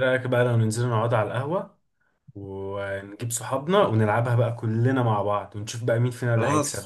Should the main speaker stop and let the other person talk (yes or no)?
yes